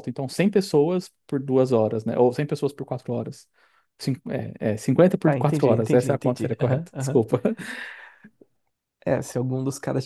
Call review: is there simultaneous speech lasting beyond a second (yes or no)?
yes